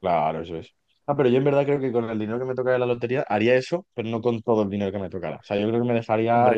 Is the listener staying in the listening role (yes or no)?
yes